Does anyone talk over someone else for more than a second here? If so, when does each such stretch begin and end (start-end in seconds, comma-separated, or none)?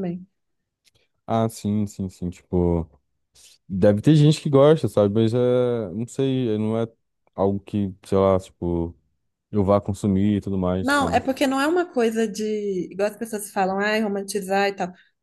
none